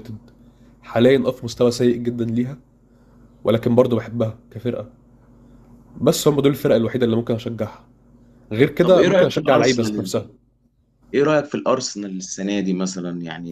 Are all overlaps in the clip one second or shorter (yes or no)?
no